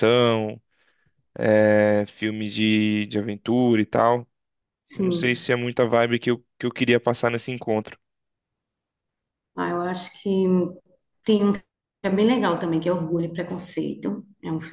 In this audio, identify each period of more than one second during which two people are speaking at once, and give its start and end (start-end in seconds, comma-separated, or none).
none